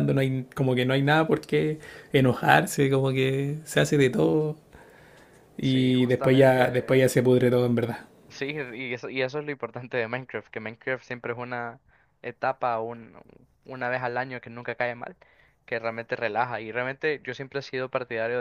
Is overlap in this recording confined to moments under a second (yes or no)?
no